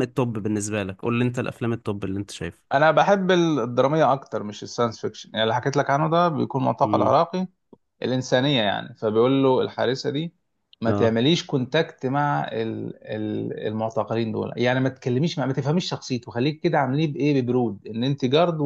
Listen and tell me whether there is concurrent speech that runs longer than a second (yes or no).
no